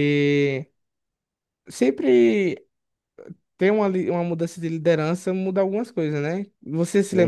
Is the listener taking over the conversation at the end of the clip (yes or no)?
yes